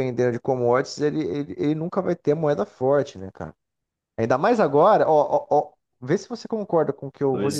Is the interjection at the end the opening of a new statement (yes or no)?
no